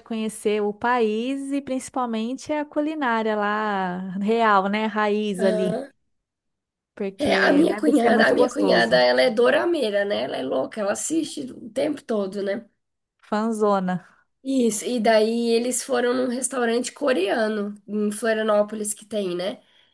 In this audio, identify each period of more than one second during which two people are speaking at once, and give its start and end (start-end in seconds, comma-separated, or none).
7.2-9.0